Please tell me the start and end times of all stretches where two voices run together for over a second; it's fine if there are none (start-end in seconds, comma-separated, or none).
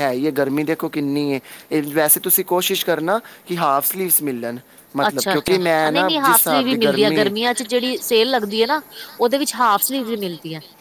5.1-7.3